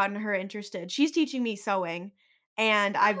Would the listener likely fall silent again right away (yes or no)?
yes